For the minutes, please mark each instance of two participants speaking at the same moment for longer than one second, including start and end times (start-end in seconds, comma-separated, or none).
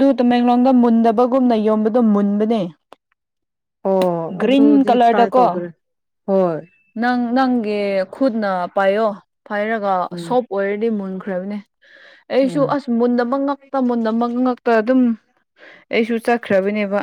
4.4-5.6